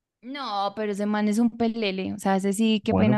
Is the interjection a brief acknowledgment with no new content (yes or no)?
no